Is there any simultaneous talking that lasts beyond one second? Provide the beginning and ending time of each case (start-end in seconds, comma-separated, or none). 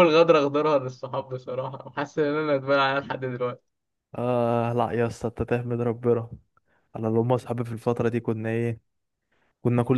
none